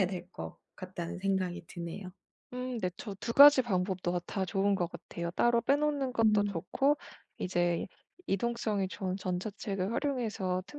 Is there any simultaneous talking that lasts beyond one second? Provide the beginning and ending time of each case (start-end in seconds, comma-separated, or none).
none